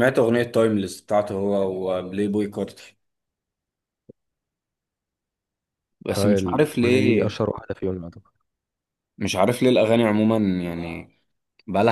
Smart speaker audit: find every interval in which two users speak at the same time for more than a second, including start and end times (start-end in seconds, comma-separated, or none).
6.2-7.4